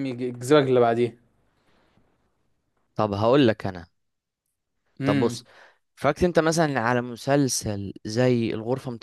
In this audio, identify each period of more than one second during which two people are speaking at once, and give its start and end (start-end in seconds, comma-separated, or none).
none